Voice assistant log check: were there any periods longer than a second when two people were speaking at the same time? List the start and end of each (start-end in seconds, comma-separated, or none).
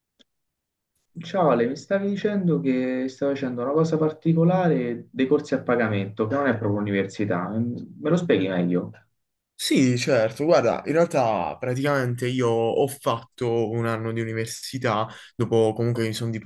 none